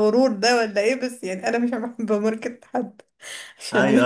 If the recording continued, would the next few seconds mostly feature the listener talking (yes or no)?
yes